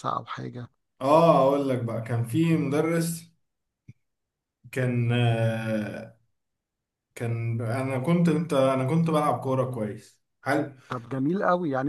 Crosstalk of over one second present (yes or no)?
no